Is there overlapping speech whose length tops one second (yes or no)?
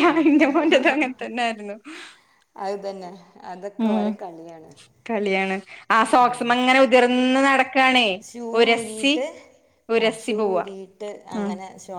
no